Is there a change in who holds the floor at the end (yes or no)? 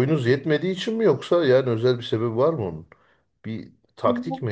yes